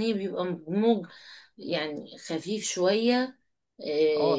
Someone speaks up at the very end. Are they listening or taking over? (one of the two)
taking over